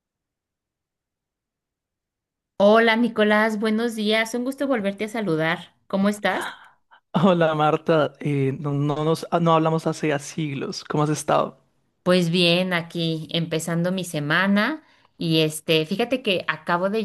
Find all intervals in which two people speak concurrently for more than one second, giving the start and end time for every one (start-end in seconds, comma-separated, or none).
none